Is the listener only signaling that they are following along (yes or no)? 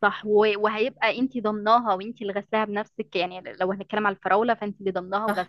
yes